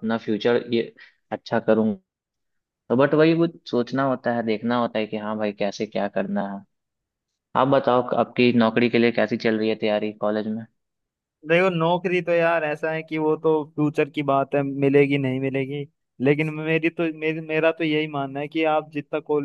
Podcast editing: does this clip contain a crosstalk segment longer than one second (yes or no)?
no